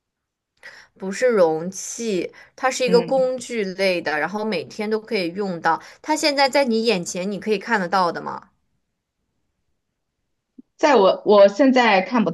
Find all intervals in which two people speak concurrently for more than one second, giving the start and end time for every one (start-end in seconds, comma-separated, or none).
none